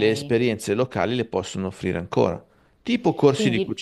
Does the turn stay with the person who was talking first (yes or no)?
yes